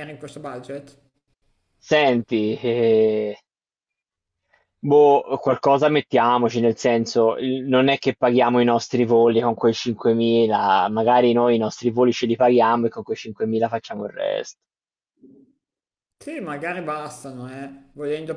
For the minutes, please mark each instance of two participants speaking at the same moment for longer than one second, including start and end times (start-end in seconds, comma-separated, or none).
none